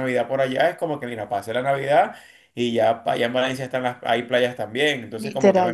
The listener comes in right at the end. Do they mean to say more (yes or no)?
yes